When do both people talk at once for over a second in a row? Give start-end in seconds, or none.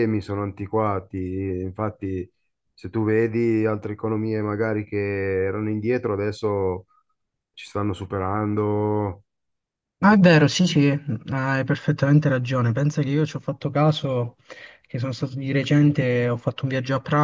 none